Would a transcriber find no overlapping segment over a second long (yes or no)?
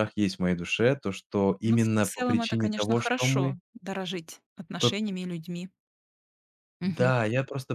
no